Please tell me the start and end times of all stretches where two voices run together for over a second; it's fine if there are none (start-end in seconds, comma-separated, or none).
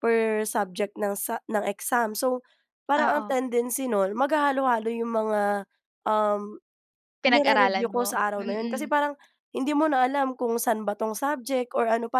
7.3-8.9